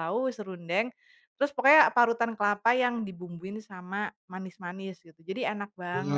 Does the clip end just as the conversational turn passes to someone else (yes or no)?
yes